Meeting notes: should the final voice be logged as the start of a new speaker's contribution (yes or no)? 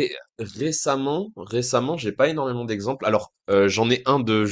no